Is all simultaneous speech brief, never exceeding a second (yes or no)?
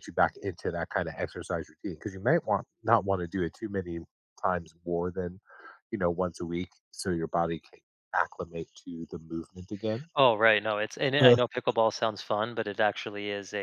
yes